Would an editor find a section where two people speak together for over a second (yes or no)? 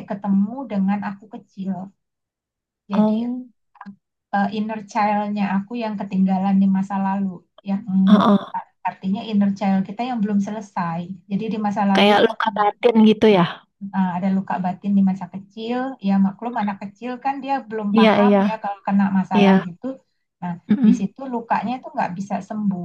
no